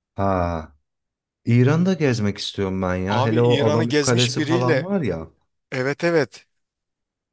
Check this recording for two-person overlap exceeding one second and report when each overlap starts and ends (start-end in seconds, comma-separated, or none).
3.1-4.9